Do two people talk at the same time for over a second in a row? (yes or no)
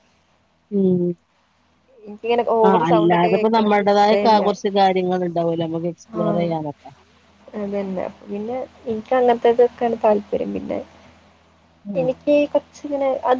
yes